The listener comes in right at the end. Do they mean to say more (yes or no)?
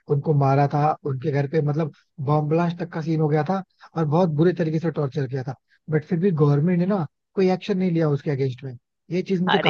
yes